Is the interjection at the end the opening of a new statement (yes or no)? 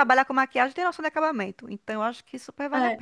yes